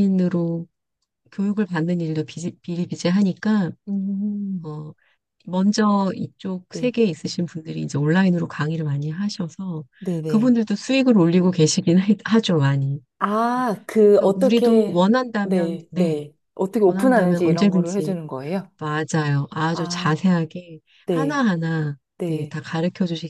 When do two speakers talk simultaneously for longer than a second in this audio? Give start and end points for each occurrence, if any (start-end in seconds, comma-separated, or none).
14.0-16.2, 16.8-18.2